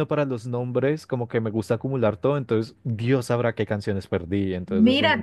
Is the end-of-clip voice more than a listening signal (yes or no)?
yes